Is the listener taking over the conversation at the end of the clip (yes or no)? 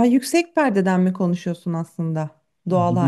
yes